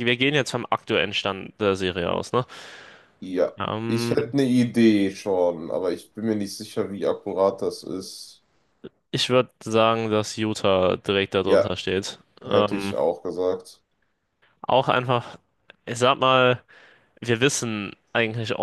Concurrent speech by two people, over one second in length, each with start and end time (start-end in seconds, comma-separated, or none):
none